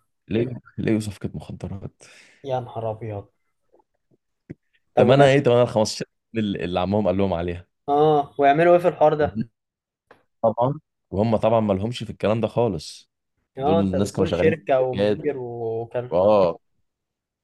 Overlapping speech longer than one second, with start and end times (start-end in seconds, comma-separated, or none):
13.6-15.4